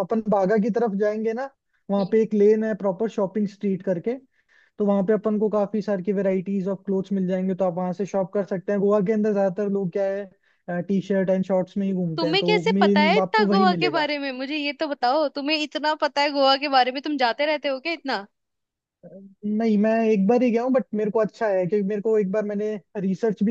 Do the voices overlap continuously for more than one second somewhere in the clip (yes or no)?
yes